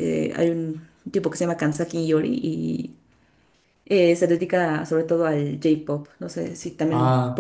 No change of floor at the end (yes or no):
no